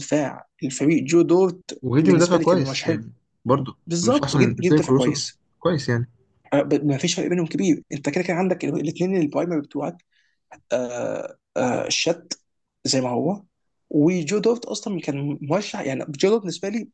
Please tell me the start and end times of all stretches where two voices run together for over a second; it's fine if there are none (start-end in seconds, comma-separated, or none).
1.8-3.0, 3.9-5.4